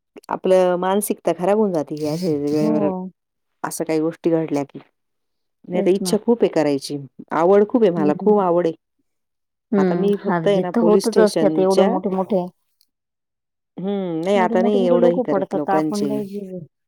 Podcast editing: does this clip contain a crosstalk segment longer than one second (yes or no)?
yes